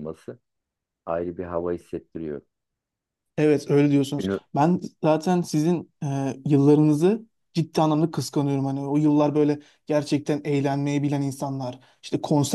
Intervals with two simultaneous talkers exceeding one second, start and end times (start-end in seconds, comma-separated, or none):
none